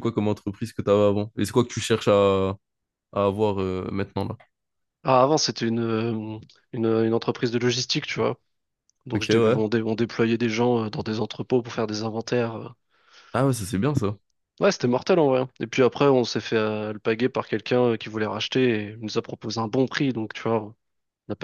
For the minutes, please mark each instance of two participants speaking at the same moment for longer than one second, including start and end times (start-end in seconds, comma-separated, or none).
none